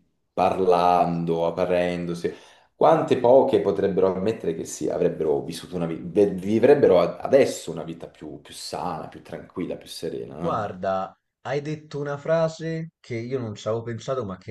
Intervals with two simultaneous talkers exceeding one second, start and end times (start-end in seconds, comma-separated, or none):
none